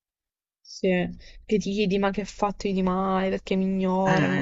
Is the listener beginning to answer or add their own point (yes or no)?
yes